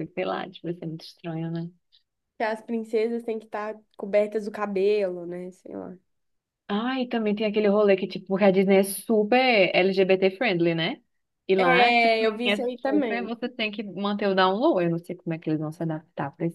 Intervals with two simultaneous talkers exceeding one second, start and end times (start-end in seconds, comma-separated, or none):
11.6-13.3